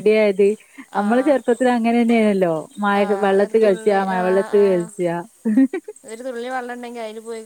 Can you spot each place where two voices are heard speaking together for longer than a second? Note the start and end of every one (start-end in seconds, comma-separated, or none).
3.0-4.8